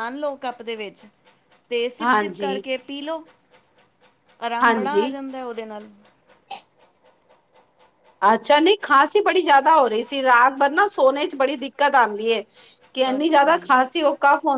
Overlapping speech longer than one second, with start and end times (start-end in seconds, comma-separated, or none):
none